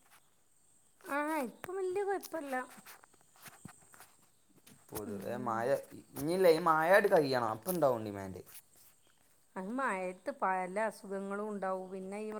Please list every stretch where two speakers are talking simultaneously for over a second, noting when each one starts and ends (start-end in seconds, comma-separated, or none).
none